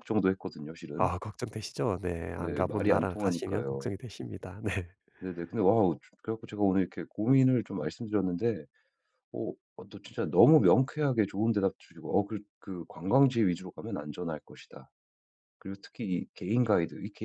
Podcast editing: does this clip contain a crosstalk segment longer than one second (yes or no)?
yes